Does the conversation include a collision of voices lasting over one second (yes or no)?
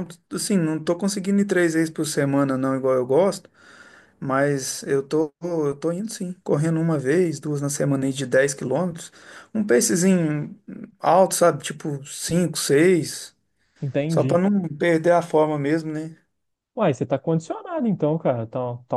no